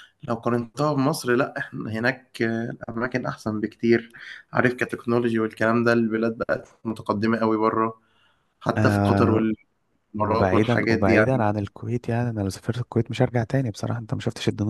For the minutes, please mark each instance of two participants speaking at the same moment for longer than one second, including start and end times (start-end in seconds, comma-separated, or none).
10.2-11.4